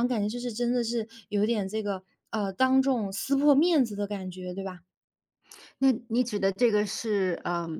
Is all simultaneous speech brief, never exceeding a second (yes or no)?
yes